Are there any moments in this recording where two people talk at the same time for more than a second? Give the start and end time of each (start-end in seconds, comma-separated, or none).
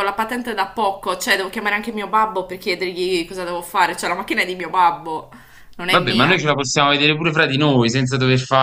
none